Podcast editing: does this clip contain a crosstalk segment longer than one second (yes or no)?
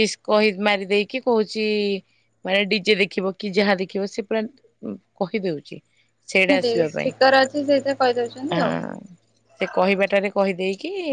no